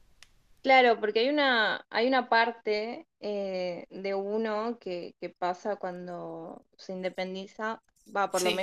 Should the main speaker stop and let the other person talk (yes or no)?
no